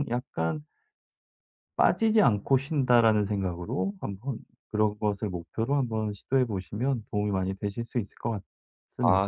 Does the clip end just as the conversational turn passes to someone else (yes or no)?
yes